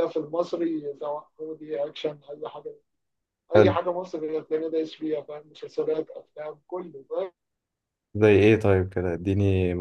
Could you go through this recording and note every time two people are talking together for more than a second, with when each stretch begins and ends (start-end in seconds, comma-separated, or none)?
none